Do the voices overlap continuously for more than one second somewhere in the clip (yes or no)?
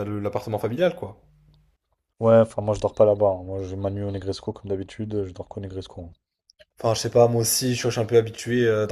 no